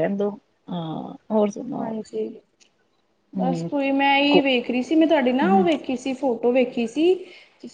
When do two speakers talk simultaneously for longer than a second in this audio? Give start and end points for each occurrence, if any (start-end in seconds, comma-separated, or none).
none